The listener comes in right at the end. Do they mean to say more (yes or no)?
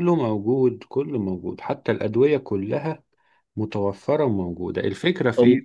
no